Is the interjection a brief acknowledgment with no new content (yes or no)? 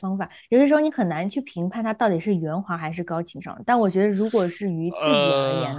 yes